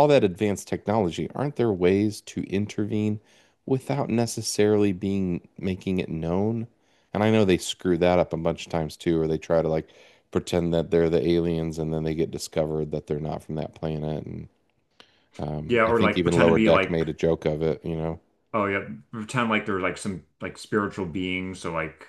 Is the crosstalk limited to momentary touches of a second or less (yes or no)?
no